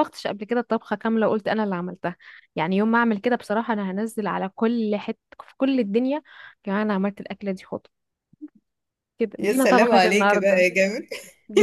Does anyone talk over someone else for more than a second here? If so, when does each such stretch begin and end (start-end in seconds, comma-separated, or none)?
9.4-10.7